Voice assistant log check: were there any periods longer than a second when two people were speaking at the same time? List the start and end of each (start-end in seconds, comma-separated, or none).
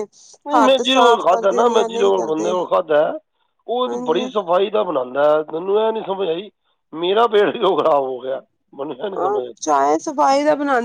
0.7-2.5